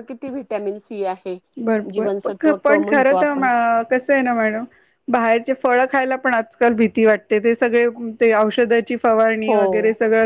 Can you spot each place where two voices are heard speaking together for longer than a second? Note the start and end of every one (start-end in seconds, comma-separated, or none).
1.9-3.4